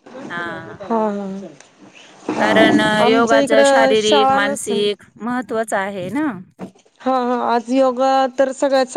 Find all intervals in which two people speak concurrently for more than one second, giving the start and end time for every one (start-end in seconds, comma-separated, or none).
3.0-4.9